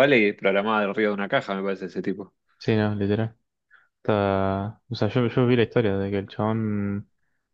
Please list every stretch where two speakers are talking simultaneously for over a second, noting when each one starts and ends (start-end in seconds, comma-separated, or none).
none